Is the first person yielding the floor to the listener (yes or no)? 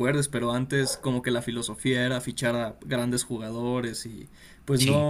no